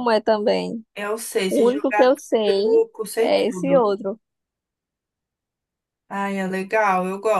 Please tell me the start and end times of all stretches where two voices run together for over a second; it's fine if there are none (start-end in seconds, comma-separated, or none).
1.5-3.9